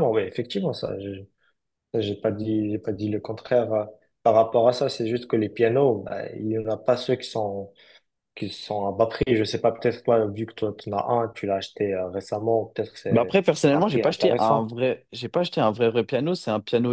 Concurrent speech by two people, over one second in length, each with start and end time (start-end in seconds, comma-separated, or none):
13.1-14.7